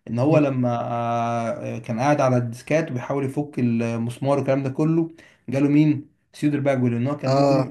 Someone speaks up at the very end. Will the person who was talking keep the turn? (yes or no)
yes